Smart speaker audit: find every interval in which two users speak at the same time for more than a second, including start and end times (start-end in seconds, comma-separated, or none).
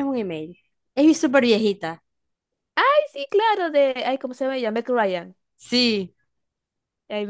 none